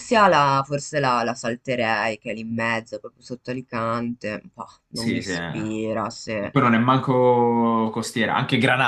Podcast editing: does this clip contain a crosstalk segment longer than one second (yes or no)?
yes